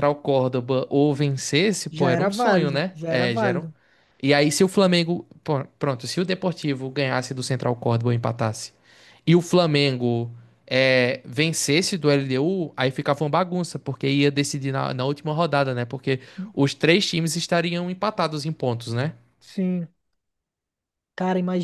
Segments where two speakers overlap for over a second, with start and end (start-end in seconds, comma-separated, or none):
1.9-3.6